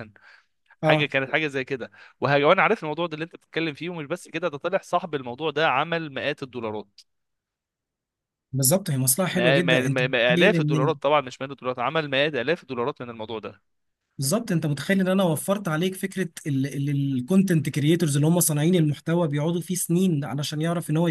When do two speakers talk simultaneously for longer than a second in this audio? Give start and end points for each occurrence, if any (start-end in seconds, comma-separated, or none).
9.3-10.9